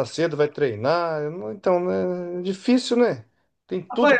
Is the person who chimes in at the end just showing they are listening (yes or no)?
no